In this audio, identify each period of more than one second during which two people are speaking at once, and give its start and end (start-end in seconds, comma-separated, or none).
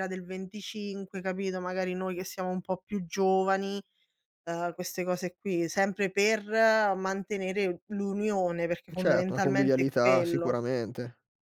9.0-10.6